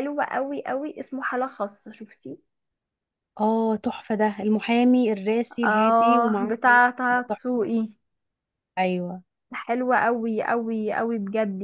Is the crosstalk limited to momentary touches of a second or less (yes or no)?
no